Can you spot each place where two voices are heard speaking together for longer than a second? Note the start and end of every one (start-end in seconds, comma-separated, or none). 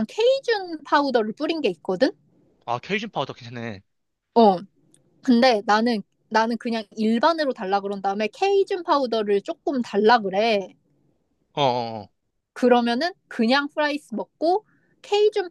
none